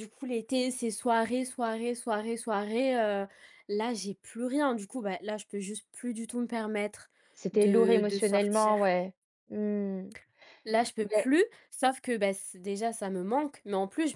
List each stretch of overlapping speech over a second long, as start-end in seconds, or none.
7.5-8.8